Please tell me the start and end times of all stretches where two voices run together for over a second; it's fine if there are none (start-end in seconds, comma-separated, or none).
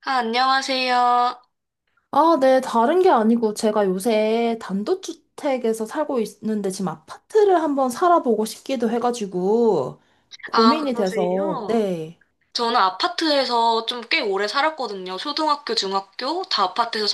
10.5-11.9